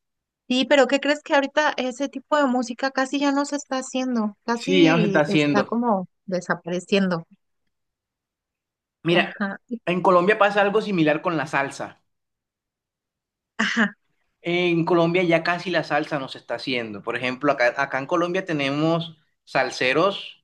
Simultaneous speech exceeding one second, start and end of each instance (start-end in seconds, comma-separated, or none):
4.5-5.8